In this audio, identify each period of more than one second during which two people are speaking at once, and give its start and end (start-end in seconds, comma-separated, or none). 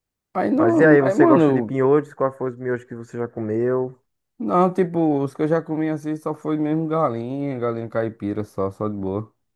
0.5-1.8